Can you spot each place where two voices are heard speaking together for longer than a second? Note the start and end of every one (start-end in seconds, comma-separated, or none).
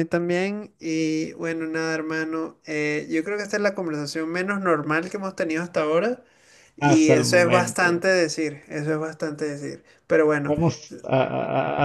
6.8-8.1